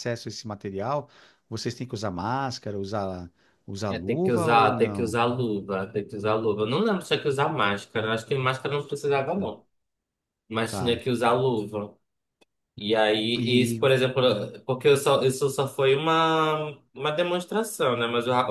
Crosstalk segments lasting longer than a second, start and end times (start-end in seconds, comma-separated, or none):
3.9-5.2